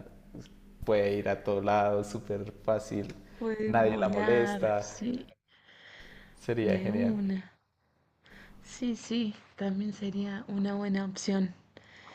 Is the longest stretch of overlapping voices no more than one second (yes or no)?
no